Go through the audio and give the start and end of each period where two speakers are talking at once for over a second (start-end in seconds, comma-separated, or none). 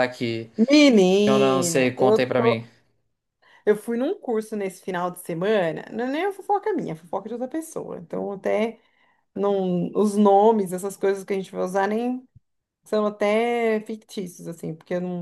1.2-2.7